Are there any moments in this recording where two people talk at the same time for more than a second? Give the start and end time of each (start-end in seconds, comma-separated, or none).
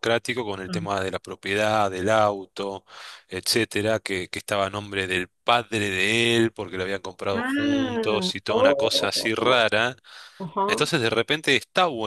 7.4-9.6